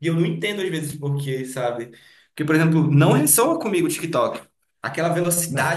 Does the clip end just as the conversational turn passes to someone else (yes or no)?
no